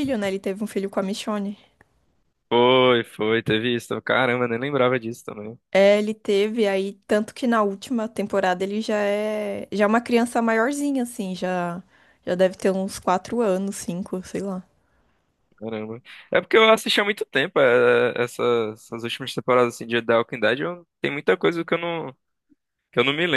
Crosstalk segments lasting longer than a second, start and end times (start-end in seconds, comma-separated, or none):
none